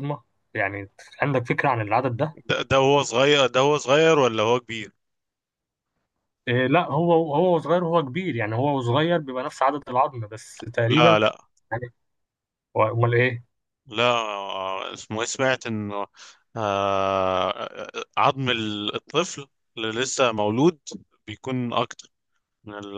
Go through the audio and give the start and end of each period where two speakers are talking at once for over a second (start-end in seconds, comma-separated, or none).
none